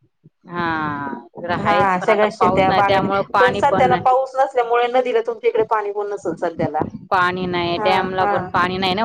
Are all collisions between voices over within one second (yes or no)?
no